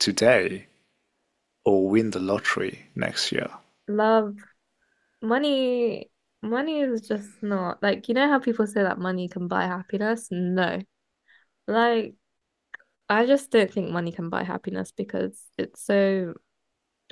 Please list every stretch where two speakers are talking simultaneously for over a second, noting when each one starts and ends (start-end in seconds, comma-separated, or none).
none